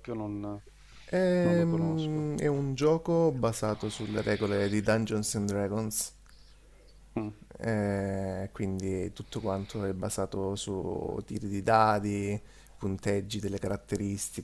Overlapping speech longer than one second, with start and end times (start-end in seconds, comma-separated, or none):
1.1-2.3